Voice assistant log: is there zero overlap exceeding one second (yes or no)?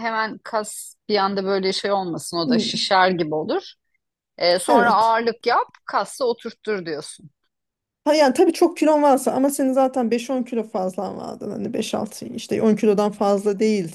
yes